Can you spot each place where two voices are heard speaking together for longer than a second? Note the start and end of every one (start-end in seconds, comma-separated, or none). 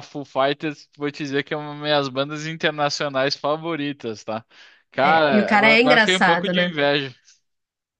5.0-6.7